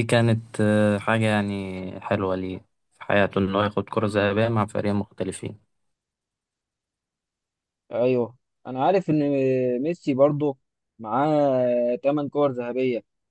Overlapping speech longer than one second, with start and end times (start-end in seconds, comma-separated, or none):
none